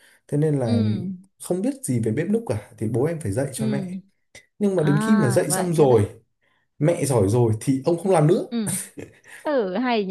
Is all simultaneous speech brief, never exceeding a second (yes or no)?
no